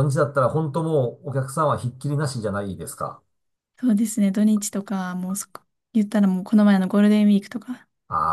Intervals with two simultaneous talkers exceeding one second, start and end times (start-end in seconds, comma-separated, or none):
none